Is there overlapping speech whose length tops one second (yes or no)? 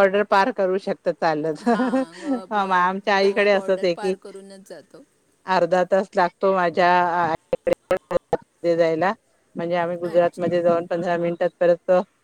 yes